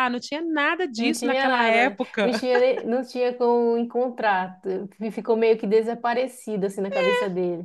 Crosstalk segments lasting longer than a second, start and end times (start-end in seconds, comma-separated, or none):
0.9-2.3